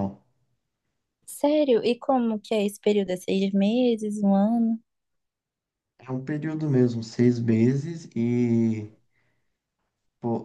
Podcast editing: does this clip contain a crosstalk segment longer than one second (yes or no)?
no